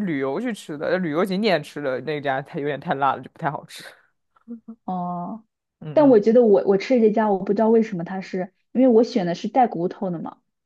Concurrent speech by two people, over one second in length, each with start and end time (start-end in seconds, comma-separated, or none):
none